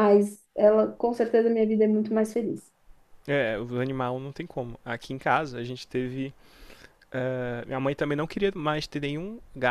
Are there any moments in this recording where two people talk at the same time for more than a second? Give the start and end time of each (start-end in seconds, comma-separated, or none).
none